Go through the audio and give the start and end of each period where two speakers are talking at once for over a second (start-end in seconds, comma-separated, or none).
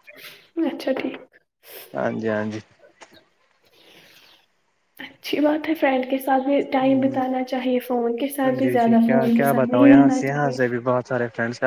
8.6-10.7